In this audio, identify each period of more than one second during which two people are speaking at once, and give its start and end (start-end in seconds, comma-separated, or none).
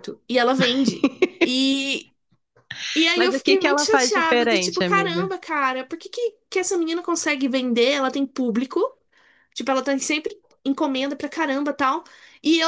3.2-5.3